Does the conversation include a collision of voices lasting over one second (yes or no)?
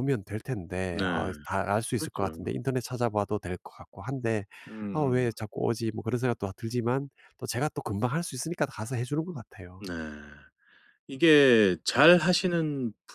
no